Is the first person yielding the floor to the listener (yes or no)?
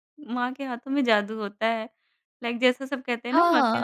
yes